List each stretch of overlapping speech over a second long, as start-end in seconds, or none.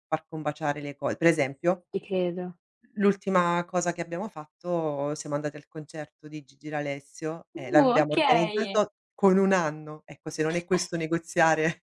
7.5-8.8